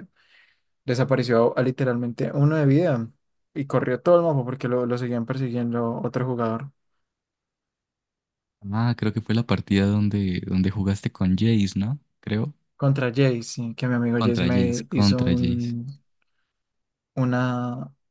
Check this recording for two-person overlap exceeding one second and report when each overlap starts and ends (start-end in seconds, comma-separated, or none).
14.2-15.8